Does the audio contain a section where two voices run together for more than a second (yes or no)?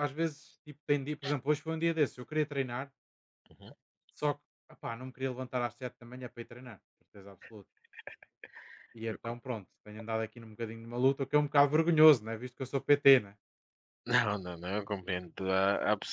no